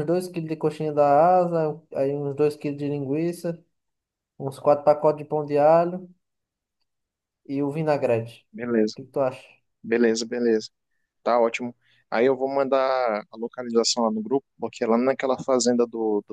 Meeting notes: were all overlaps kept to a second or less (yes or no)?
yes